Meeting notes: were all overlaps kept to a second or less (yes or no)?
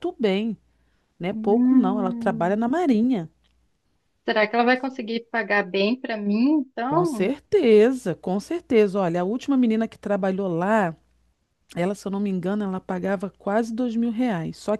no